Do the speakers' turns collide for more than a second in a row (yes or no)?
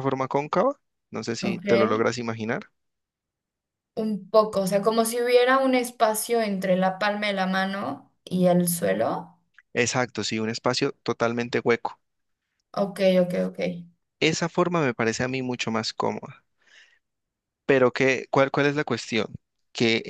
no